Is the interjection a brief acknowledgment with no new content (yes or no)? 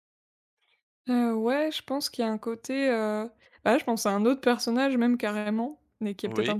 yes